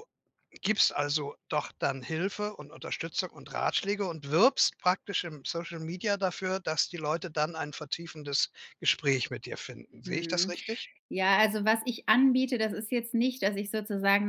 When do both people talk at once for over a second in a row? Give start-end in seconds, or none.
none